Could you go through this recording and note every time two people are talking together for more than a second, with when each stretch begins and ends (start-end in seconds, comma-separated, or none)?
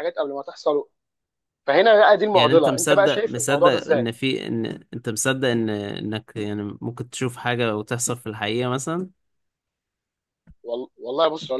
2.3-4.1